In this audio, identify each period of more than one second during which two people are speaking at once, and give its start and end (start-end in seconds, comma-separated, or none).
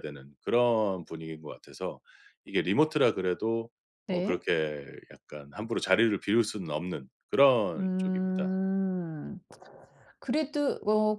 none